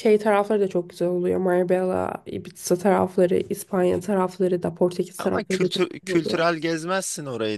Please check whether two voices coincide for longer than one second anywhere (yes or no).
yes